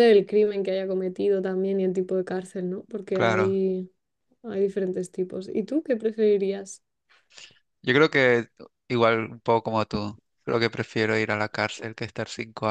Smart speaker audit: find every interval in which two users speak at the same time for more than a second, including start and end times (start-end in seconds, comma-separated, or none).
none